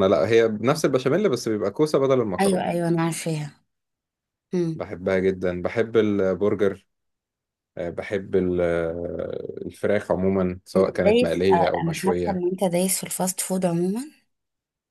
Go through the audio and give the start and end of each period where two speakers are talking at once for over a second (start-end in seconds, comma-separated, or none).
10.8-12.4